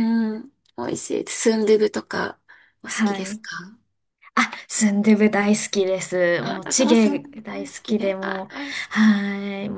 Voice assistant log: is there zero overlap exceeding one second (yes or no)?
no